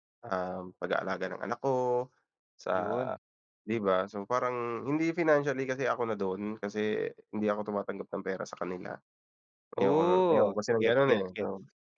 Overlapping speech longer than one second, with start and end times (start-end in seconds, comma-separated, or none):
9.8-11.4